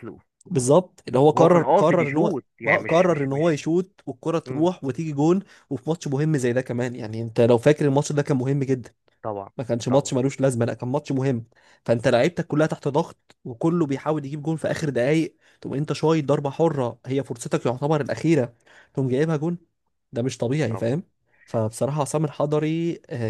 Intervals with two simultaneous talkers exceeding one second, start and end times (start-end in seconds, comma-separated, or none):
1.4-3.6